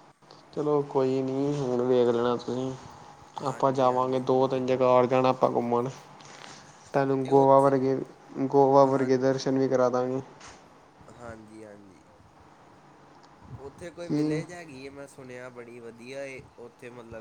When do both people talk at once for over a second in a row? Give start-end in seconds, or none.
3.5-5.0